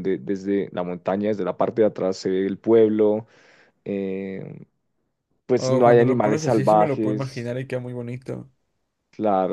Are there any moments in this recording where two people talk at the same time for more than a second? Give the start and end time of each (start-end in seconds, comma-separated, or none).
5.5-7.5